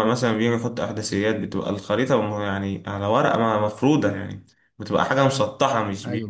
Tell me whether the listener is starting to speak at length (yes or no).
no